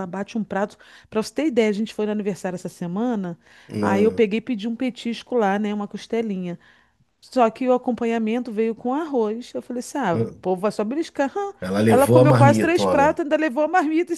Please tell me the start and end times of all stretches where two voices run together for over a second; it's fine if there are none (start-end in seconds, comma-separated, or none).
11.6-13.2